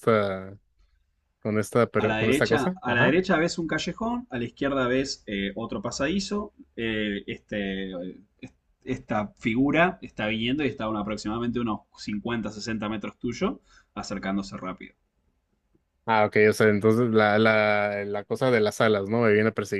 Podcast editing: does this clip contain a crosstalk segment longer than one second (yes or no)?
yes